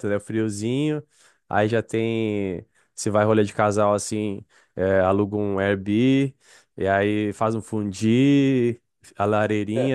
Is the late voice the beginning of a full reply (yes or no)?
no